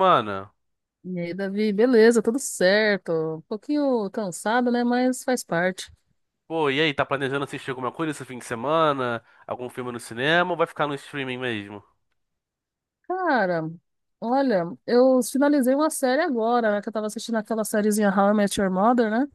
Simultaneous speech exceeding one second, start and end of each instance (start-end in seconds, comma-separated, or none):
none